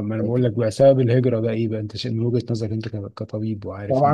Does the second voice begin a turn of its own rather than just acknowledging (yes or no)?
yes